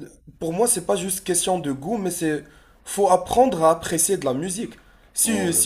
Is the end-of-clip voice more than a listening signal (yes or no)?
no